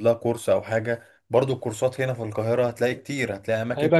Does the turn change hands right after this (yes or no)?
no